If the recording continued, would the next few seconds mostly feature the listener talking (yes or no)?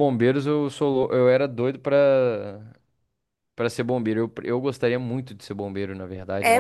yes